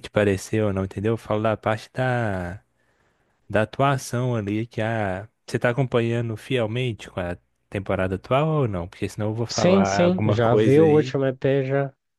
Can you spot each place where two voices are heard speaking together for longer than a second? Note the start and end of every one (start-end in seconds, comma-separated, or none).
9.5-11.2